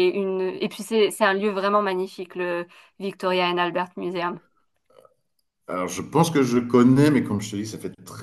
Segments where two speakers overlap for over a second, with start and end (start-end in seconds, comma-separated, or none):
none